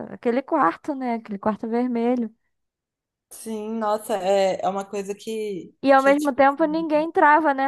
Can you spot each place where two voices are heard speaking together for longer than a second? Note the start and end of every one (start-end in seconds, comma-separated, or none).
5.9-7.1